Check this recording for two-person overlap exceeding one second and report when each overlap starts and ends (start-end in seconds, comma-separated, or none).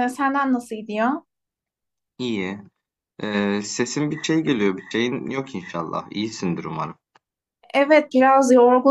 none